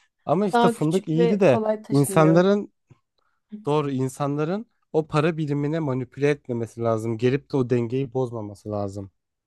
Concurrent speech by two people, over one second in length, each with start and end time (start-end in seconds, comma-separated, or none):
0.5-2.5